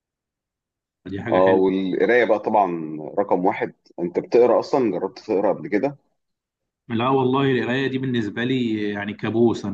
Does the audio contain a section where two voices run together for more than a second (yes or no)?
no